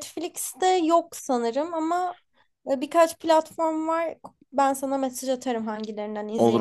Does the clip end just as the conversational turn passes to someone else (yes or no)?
yes